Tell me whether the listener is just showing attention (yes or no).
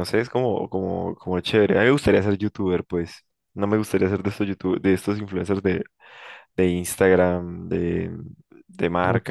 no